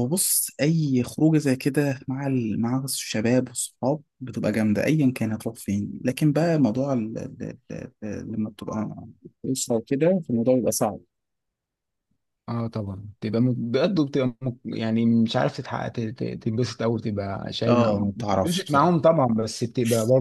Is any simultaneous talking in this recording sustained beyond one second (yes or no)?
yes